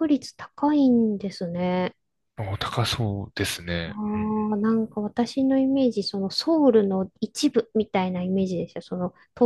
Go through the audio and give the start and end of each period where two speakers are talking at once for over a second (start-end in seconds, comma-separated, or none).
none